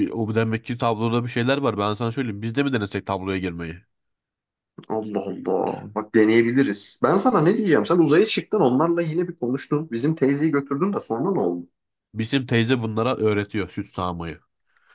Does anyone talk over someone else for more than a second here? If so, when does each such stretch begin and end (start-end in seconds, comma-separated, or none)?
none